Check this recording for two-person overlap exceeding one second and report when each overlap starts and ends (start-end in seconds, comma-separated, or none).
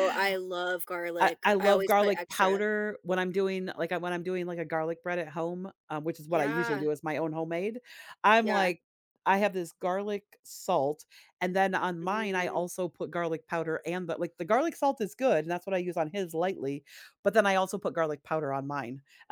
1.2-2.6